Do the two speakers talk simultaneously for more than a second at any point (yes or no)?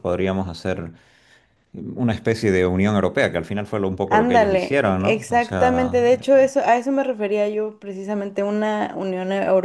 yes